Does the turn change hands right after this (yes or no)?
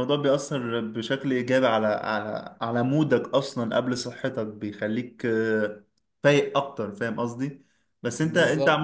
no